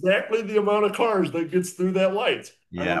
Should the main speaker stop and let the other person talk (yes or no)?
yes